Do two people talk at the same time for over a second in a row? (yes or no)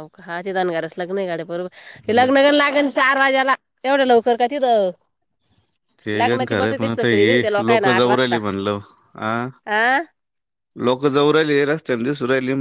yes